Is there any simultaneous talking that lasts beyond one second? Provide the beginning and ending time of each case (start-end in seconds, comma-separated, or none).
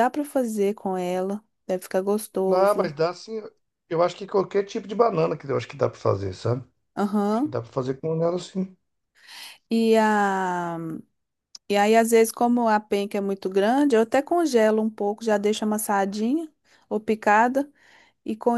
none